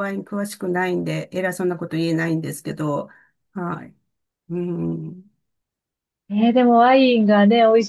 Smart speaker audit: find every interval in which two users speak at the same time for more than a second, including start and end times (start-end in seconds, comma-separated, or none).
none